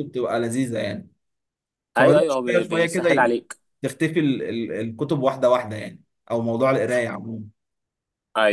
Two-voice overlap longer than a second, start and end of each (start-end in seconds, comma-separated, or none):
2.0-3.4